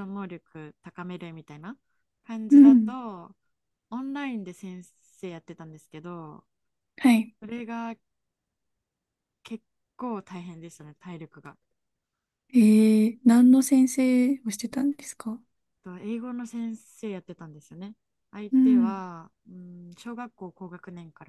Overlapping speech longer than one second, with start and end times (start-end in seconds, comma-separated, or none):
none